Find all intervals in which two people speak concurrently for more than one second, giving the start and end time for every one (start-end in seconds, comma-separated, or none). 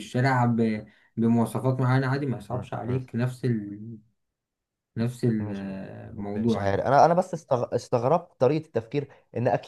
none